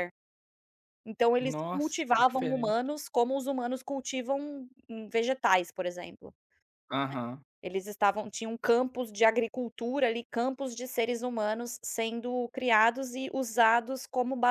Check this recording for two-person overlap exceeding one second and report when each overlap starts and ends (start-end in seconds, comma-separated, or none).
1.4-2.8